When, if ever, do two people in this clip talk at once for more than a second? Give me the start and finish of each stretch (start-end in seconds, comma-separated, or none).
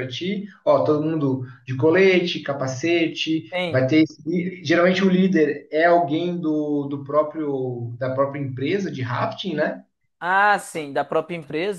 none